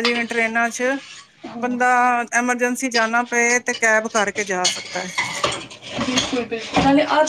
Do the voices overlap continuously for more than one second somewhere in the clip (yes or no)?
no